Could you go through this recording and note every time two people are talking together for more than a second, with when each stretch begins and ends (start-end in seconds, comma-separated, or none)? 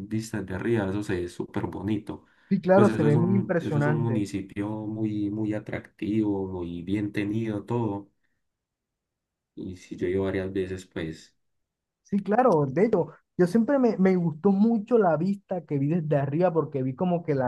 2.7-4.2